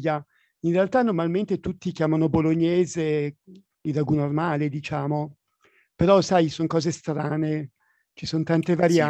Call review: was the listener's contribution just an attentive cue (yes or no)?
no